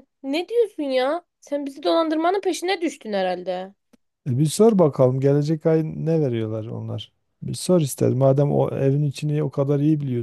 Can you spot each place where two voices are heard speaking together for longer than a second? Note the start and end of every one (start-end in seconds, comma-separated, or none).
none